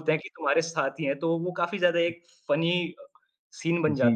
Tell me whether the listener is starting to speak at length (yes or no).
yes